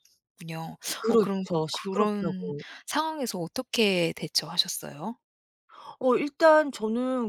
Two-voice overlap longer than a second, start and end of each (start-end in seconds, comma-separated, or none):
1.0-2.6